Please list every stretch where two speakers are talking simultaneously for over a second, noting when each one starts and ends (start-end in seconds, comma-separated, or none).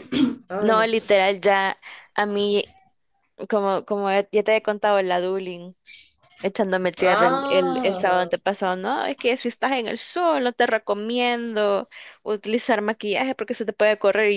7.0-8.3